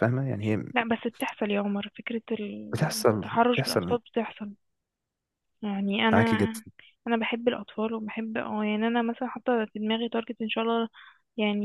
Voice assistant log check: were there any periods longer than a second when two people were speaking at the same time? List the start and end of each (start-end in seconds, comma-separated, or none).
2.7-4.0